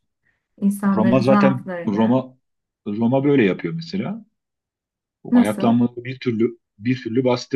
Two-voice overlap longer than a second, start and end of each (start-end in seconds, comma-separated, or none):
1.0-2.2